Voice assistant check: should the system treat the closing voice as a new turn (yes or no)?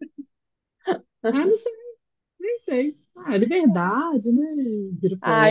yes